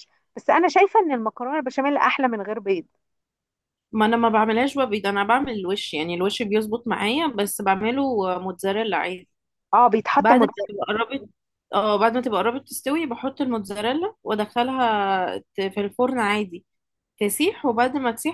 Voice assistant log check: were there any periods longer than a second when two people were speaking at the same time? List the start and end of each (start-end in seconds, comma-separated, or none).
none